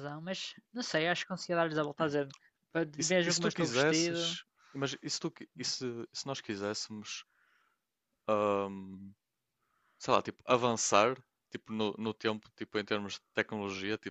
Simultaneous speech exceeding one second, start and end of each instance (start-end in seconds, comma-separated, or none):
3.0-4.4